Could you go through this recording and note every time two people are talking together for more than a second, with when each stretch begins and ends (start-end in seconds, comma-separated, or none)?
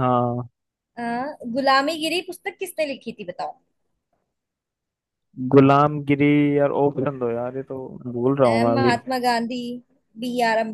none